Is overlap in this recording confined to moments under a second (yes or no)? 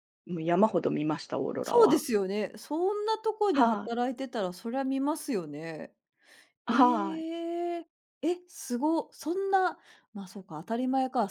yes